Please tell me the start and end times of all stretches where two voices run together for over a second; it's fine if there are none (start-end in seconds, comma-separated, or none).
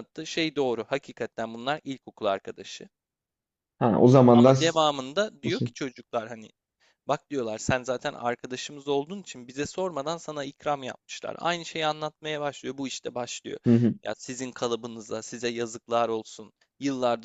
none